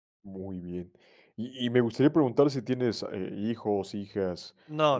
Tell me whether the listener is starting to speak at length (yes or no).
no